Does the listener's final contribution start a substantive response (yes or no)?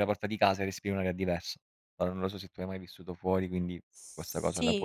yes